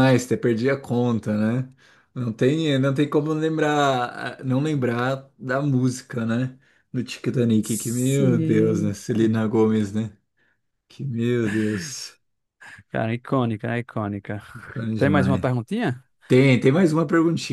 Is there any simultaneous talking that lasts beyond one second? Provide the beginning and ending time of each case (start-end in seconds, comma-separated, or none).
7.6-9.5